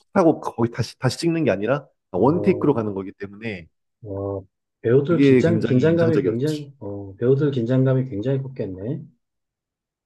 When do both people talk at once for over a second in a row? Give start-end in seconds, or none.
5.1-6.7